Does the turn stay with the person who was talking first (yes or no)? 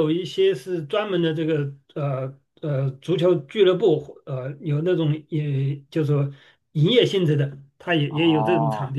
no